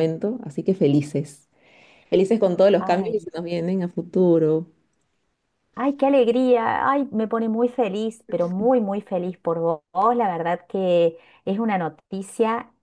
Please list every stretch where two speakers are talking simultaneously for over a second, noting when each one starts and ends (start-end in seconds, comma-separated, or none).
none